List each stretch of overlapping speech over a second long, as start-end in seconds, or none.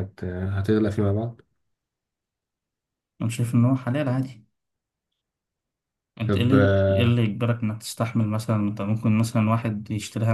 none